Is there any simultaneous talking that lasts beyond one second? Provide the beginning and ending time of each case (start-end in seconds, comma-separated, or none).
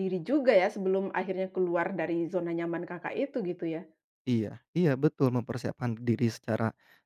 none